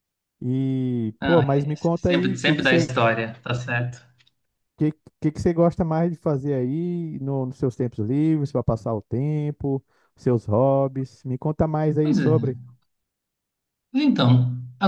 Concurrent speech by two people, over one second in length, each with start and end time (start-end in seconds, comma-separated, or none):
1.2-2.9